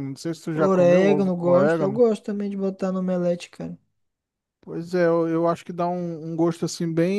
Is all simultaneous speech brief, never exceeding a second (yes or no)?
no